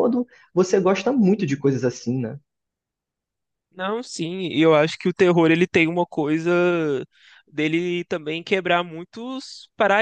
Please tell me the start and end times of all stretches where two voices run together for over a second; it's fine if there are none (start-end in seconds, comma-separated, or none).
none